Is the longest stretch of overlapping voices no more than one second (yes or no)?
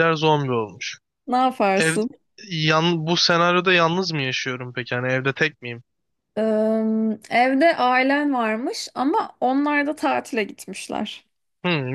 yes